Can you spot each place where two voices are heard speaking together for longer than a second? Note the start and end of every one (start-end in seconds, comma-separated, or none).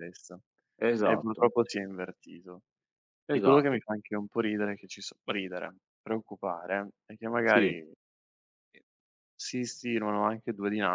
none